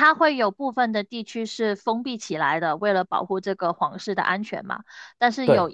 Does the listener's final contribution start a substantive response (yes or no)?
no